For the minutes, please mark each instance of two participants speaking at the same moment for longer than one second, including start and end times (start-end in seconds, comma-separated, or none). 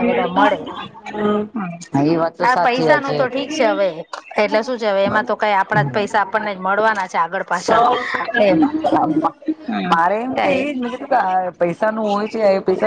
none